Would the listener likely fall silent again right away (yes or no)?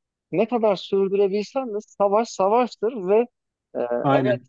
yes